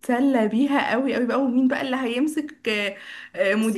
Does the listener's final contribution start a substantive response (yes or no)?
no